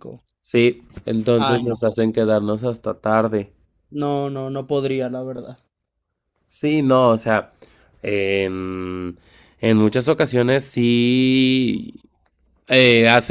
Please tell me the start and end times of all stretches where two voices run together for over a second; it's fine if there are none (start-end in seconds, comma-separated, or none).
none